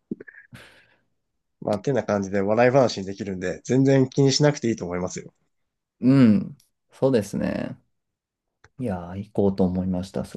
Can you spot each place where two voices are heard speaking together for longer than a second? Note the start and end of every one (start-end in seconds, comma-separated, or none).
none